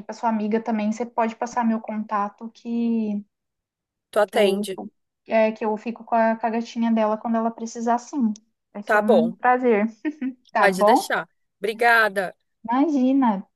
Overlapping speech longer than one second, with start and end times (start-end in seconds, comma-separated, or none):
none